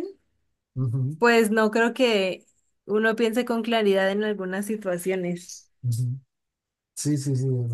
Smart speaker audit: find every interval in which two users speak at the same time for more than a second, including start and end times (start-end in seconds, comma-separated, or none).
none